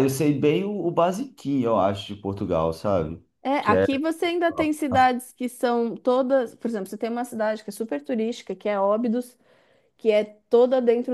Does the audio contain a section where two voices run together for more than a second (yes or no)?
no